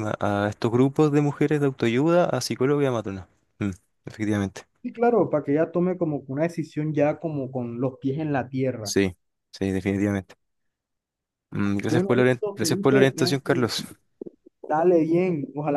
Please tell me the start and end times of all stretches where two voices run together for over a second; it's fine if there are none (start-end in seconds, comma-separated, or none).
11.8-13.5